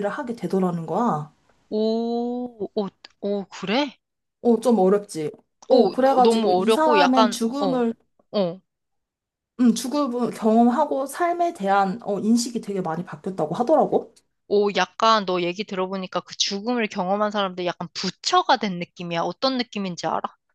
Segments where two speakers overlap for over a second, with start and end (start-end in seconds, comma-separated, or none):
5.7-7.8